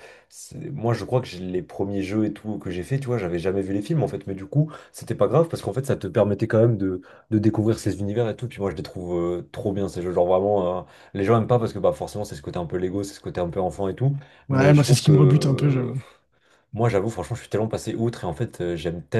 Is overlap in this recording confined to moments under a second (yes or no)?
no